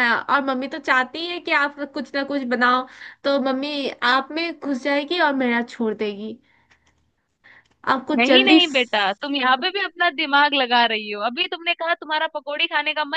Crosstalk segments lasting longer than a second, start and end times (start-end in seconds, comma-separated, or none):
none